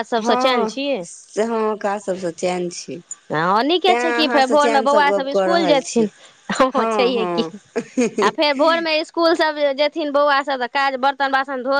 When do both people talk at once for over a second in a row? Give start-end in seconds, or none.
3.9-6.1